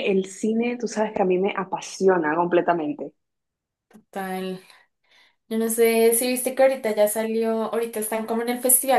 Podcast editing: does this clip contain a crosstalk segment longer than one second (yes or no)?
no